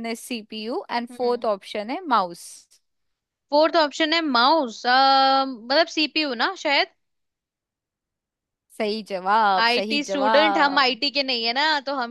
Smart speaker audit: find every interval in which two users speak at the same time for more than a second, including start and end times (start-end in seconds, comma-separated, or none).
9.6-11.0